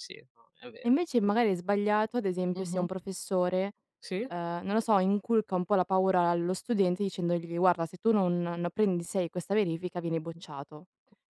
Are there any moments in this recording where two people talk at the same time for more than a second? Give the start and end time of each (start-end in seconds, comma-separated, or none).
none